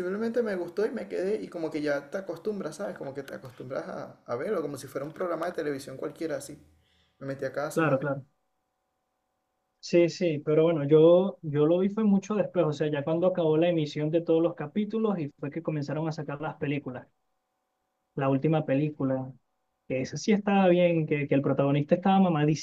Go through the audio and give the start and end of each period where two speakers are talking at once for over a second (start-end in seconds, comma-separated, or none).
none